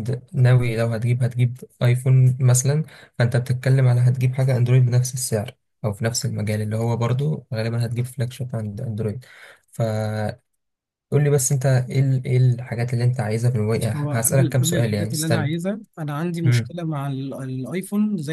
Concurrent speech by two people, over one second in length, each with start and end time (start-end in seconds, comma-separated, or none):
13.8-15.5